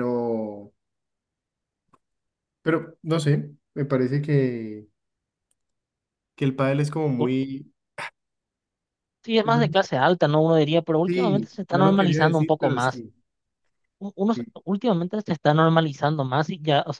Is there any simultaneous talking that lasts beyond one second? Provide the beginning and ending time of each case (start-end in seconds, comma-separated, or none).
11.1-13.0